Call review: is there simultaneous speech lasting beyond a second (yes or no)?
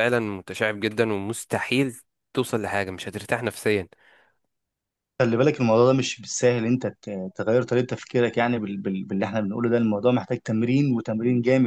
no